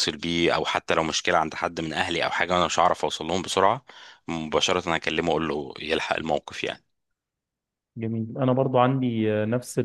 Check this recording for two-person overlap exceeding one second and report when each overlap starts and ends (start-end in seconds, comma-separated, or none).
none